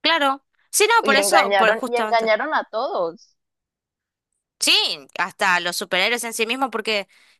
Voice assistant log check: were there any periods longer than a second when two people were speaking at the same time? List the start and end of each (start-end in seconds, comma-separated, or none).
1.0-2.3